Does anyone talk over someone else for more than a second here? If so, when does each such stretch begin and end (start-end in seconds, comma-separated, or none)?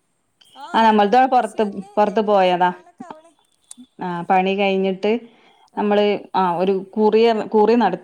0.7-2.7